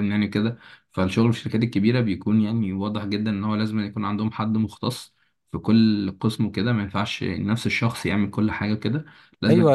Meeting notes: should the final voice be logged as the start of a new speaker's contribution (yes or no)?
yes